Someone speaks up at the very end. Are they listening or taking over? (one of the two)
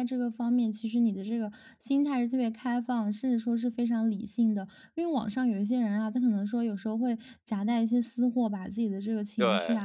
listening